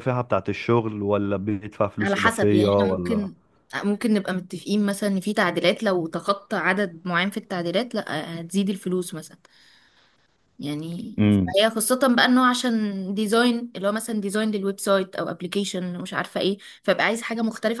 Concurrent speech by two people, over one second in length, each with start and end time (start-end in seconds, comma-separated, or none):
2.0-3.3